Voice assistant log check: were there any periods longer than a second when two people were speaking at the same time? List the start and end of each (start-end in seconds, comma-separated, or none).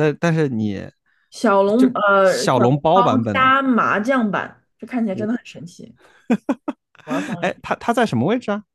1.8-3.5